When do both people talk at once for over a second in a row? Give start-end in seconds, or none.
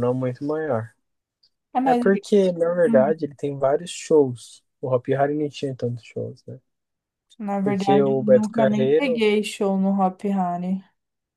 7.6-9.2